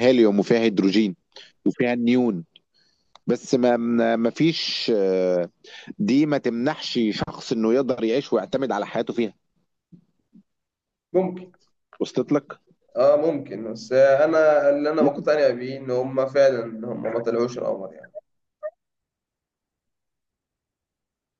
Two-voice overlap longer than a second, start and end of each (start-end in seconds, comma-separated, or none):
none